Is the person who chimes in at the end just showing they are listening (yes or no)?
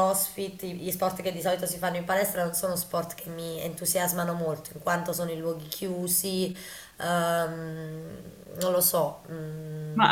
no